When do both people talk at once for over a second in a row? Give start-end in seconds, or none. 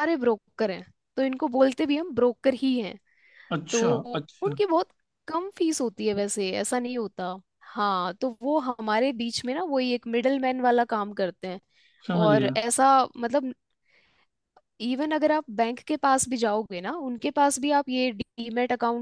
none